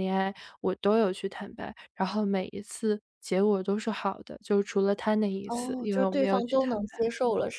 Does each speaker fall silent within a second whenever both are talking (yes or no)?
no